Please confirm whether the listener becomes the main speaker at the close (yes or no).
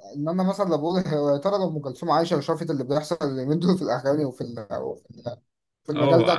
yes